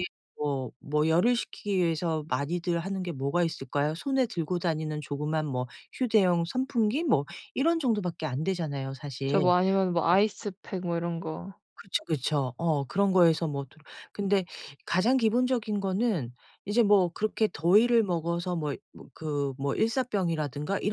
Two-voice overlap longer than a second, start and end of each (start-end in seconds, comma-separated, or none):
none